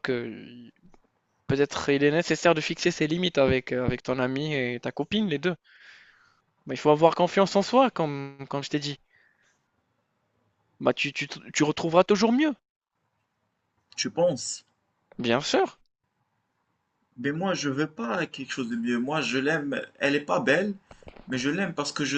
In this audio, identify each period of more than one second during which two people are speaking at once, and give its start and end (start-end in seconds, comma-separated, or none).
none